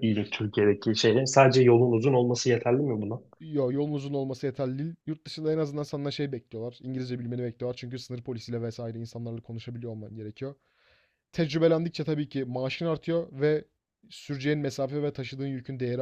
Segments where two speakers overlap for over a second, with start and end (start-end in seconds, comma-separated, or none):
none